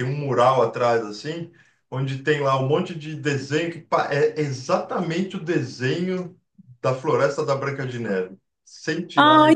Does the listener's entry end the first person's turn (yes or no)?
yes